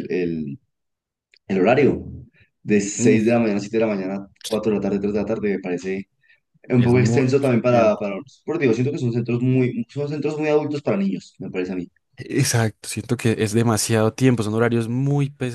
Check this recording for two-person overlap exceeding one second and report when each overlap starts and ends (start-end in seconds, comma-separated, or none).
6.8-8.1